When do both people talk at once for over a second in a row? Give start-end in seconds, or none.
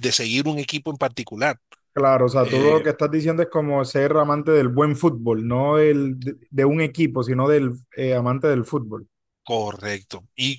none